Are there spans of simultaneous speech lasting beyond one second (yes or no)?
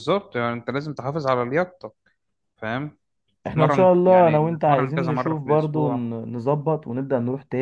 yes